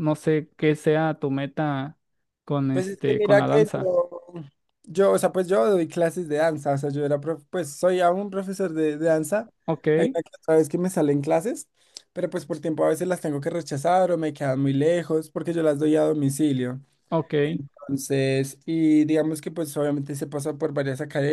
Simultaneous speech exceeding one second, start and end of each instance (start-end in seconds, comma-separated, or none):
2.7-3.9